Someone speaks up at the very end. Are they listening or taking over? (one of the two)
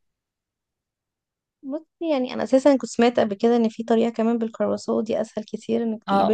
taking over